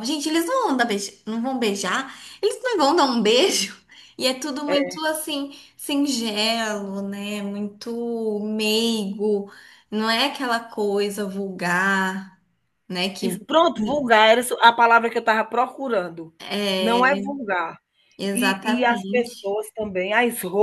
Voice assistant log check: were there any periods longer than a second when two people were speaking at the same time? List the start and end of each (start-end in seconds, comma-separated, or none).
18.3-19.5